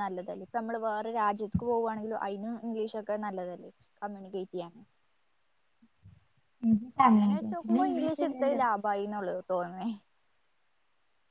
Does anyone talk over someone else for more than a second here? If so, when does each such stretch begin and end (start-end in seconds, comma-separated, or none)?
7.1-8.6